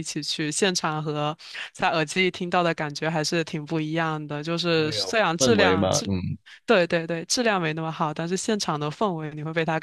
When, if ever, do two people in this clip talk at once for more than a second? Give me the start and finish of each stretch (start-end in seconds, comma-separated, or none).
4.7-6.1